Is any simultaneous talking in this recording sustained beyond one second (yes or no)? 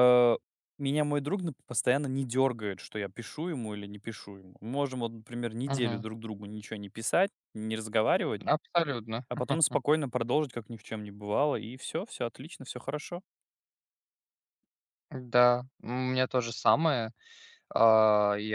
no